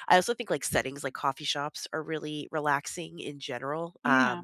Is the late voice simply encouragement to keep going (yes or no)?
yes